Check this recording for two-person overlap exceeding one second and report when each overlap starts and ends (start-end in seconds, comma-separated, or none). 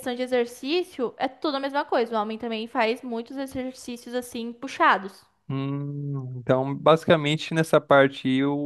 none